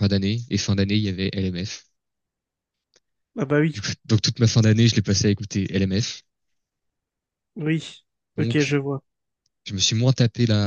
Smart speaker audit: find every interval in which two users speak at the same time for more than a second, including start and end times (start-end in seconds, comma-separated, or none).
none